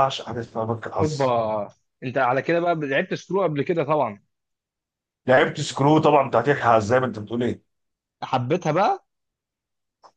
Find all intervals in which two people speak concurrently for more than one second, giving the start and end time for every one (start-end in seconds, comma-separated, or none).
none